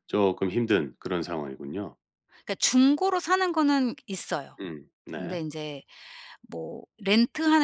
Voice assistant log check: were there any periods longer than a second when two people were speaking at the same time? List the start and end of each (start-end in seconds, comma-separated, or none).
none